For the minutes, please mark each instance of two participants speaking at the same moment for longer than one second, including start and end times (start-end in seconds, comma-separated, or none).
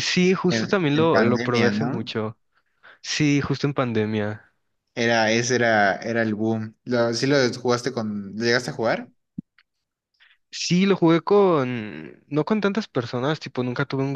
0.5-2.1